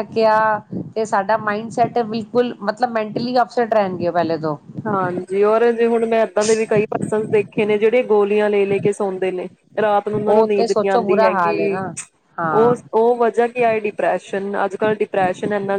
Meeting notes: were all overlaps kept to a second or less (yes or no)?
no